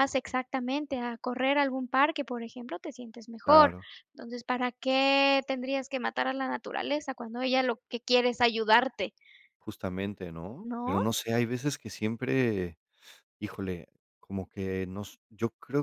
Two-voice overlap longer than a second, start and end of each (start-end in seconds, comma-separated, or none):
none